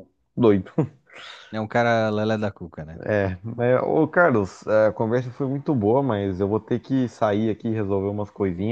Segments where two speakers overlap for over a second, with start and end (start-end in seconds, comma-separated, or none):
none